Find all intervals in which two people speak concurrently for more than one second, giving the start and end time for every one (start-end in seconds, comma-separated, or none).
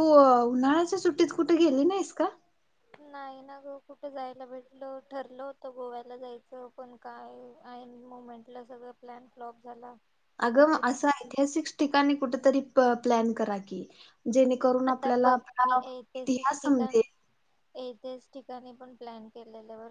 none